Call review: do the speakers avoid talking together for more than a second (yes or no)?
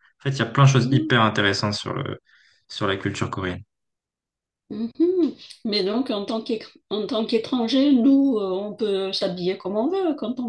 yes